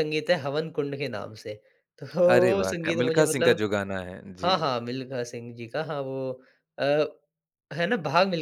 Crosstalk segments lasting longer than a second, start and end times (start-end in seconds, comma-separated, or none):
2.2-3.6